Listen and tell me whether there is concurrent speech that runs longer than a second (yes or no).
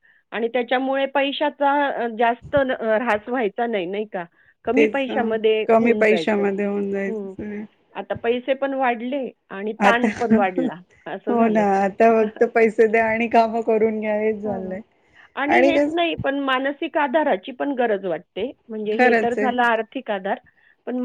yes